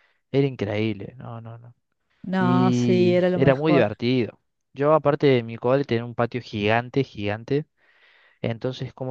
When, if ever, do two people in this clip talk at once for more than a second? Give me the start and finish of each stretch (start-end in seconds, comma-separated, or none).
2.4-3.9